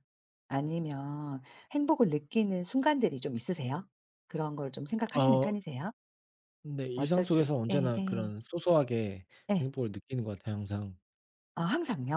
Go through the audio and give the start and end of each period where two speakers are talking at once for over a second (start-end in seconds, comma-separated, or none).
6.9-8.3